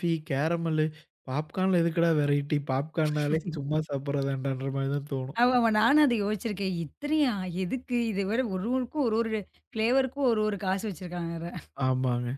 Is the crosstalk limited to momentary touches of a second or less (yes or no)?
yes